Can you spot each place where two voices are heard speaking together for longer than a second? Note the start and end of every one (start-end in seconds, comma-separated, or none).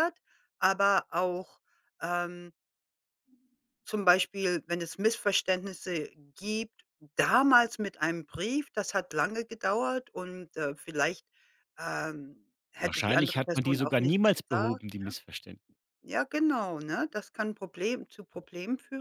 12.8-14.8